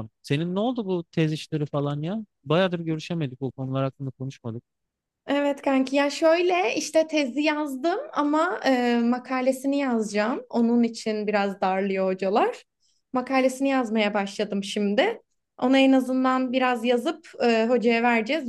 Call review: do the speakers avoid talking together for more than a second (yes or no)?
yes